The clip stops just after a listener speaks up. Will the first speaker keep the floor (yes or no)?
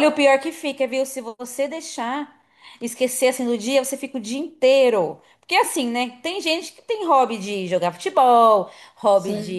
yes